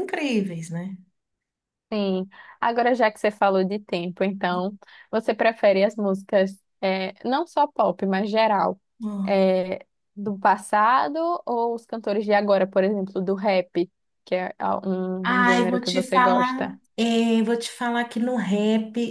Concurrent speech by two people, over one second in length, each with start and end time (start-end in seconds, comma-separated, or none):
15.2-16.8